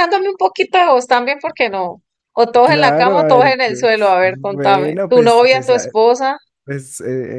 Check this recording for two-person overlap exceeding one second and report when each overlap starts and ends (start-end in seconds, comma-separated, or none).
2.6-5.9